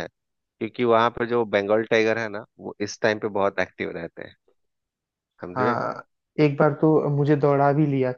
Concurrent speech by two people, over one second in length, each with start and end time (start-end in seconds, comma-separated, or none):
none